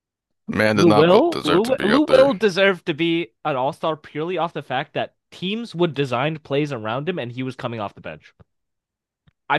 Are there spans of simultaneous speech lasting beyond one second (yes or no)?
yes